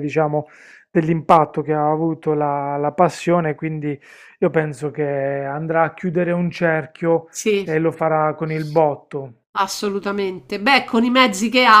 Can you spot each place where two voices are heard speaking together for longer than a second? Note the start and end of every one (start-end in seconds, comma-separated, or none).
none